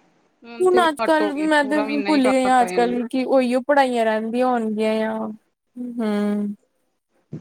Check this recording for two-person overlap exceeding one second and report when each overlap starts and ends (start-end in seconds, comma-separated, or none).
0.7-2.9